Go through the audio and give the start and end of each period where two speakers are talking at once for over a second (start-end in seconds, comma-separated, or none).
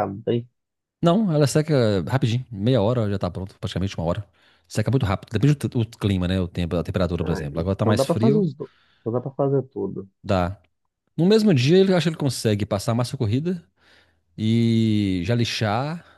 7.2-8.5